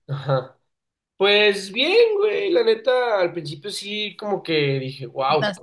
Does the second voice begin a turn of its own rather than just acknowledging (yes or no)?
no